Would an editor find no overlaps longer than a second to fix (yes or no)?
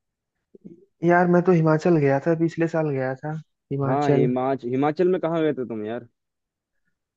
yes